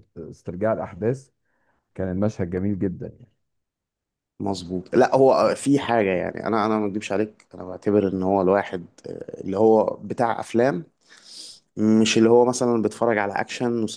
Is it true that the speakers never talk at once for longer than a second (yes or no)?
yes